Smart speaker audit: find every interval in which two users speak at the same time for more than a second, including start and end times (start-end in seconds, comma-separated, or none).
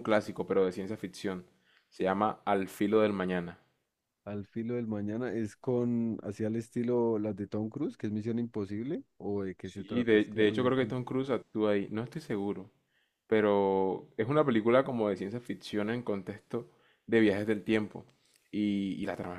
9.6-11.1